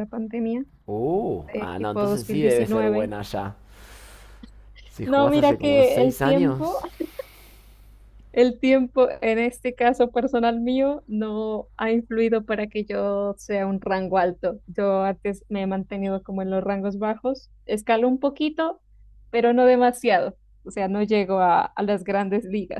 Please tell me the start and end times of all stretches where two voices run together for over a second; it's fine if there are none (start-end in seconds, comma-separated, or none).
1.5-3.1, 5.0-6.8